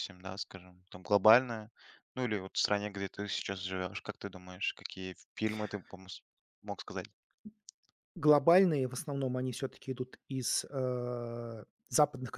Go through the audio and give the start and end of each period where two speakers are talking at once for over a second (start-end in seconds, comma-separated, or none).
none